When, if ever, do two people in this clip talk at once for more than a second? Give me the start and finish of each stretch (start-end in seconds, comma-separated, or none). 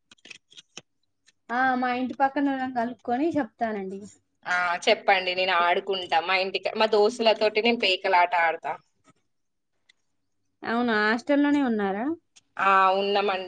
none